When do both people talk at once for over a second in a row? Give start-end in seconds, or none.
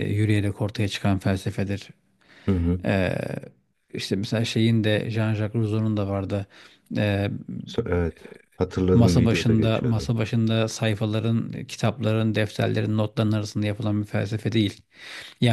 8.9-10.1